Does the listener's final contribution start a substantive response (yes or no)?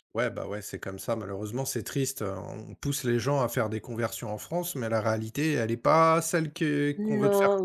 yes